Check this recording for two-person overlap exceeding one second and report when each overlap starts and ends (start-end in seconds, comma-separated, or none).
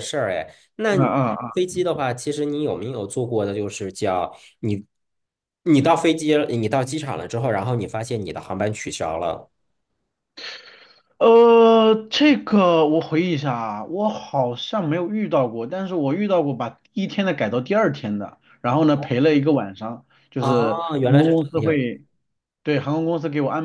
20.4-21.8